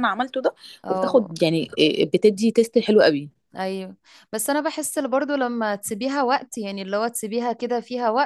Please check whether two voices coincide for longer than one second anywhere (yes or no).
no